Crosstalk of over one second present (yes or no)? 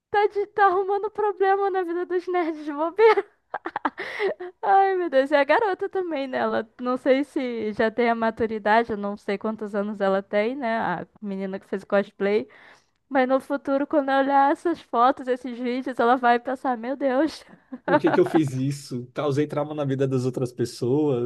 no